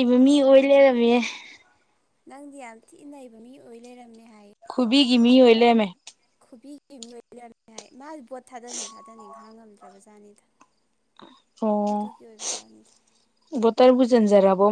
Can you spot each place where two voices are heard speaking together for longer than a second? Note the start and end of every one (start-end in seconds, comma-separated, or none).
none